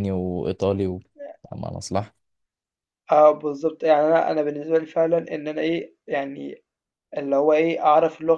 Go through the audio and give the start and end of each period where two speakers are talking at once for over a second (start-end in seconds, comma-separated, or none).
none